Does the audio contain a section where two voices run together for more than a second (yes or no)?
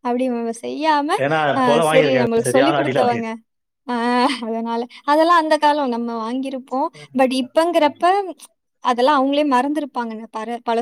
yes